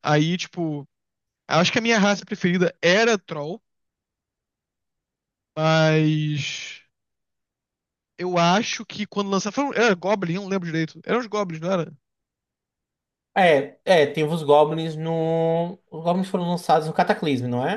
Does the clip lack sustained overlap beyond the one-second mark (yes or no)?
yes